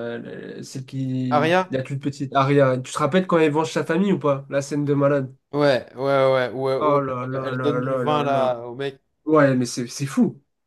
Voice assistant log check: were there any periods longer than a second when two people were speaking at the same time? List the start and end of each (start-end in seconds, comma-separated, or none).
6.8-8.6